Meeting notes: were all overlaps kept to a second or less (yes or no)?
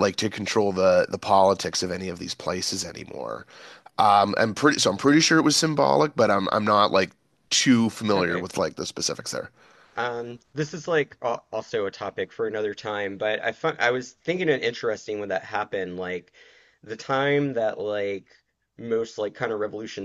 yes